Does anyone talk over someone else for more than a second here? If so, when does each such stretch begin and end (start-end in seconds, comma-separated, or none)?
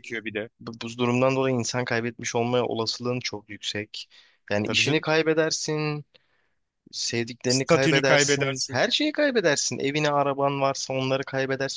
7.5-8.8